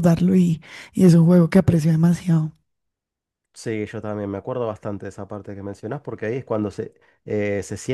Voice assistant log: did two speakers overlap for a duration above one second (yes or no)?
no